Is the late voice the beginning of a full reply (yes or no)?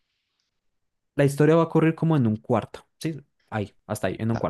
yes